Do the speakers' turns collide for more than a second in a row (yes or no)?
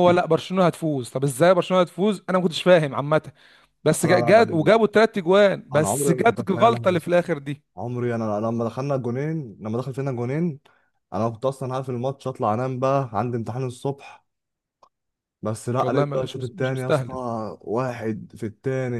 yes